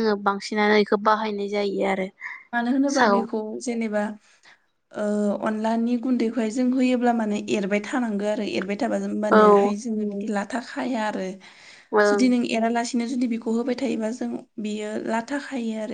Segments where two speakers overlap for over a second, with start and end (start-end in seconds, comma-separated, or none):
none